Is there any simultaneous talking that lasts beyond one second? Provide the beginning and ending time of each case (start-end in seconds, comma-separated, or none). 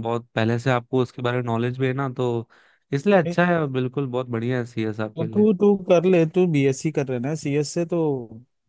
none